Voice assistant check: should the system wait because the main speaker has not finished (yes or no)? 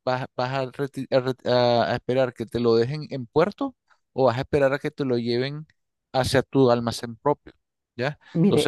no